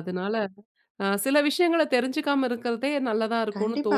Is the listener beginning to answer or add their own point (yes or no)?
yes